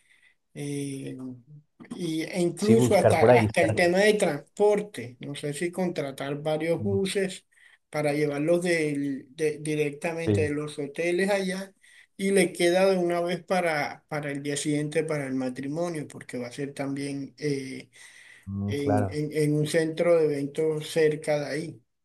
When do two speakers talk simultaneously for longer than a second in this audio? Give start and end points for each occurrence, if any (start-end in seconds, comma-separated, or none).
2.6-3.8